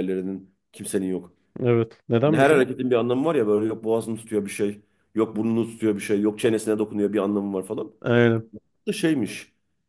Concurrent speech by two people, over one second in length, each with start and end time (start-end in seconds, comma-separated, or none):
none